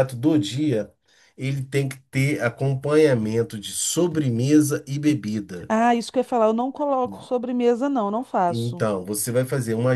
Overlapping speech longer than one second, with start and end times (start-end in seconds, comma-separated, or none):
none